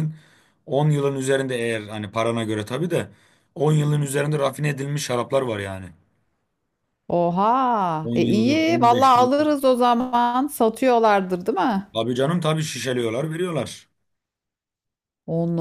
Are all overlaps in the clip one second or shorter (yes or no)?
no